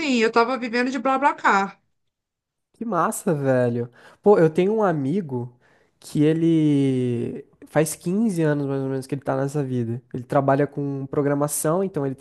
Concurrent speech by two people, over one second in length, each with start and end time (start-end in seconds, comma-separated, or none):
none